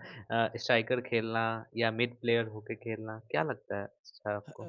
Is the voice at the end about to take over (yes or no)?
yes